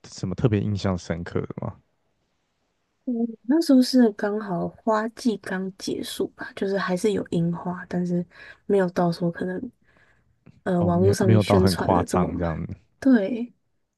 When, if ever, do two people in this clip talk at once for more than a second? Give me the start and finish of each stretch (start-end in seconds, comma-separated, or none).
10.8-12.5